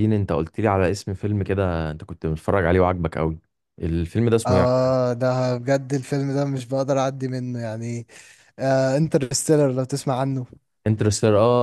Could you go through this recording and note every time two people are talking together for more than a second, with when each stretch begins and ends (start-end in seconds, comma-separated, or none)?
none